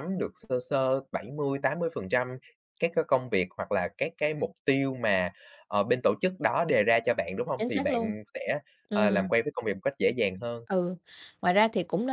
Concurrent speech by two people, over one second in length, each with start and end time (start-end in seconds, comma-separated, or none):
none